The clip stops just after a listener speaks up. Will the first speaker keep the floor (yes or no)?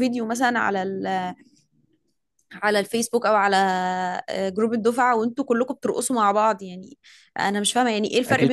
yes